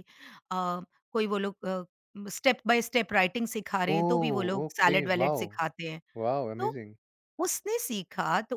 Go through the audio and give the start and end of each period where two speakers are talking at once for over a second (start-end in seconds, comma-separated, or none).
4.0-5.5